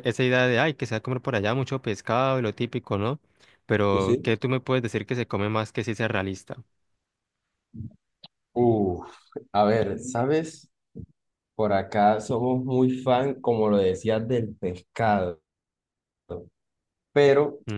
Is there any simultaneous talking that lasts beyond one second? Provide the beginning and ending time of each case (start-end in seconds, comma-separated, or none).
none